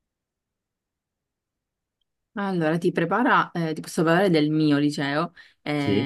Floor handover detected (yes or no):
no